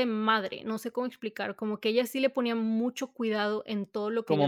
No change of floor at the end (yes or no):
yes